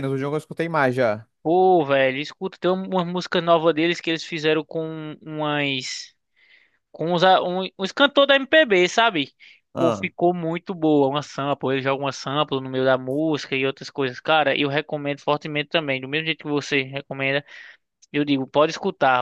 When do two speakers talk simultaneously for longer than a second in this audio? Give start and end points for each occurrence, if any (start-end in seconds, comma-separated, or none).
none